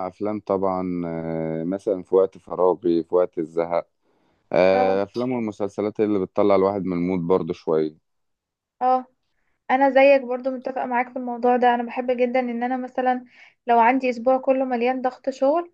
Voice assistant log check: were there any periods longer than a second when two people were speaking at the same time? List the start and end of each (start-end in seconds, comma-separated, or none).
none